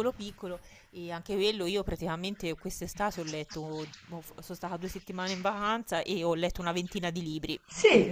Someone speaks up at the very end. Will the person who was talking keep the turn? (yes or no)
no